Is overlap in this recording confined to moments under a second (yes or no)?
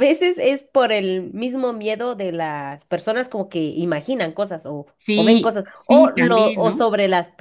no